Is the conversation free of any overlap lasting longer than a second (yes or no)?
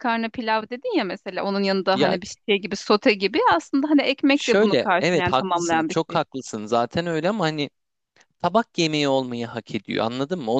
no